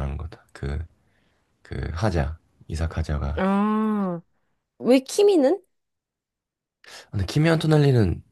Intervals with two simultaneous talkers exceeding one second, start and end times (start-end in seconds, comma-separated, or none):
none